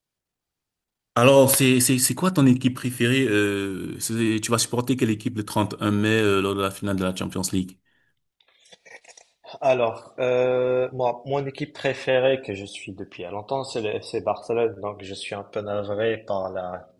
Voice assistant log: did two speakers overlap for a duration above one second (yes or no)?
no